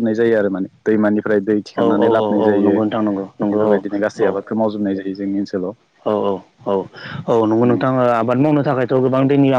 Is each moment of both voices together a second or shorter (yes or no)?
no